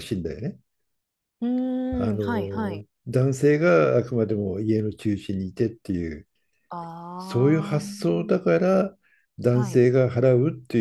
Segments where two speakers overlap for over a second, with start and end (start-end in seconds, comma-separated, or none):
7.2-8.5